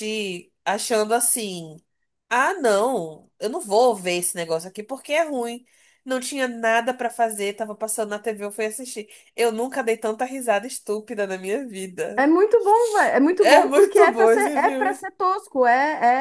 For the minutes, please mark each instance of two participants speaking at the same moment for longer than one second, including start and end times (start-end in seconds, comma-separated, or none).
13.4-15.0